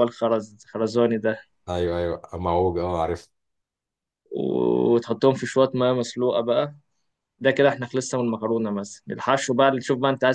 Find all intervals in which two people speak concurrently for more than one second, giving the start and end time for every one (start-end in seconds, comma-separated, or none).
none